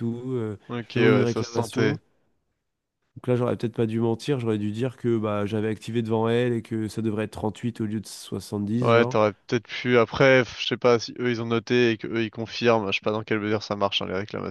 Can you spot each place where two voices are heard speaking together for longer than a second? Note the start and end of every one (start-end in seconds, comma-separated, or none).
0.7-1.9